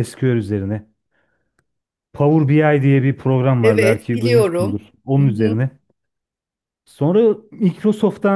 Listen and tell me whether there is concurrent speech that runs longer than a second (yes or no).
yes